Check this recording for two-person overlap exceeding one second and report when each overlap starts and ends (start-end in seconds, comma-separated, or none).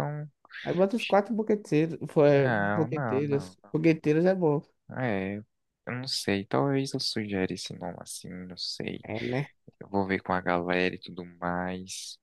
2.3-3.6